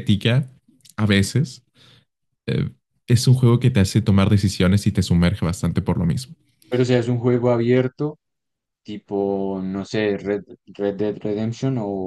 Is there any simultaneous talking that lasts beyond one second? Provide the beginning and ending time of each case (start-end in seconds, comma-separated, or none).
none